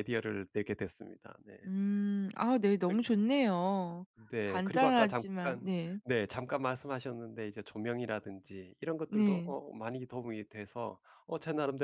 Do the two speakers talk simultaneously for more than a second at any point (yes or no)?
yes